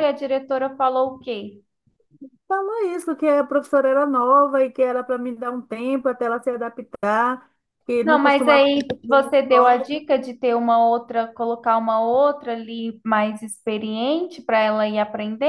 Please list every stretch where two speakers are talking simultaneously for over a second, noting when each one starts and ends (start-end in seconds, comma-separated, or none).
8.0-10.0